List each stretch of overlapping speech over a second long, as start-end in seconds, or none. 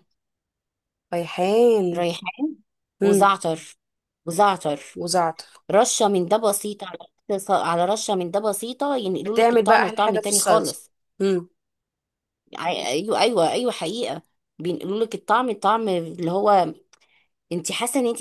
9.2-10.8